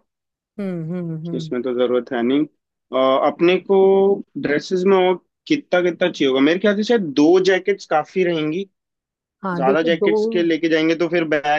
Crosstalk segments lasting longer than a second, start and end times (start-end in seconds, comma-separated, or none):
none